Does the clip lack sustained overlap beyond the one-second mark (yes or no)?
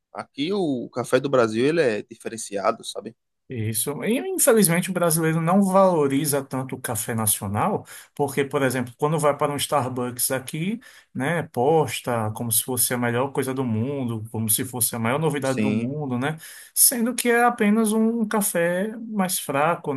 yes